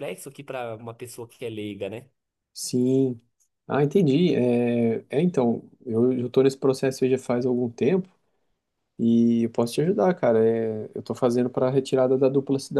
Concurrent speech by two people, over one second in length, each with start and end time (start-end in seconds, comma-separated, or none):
none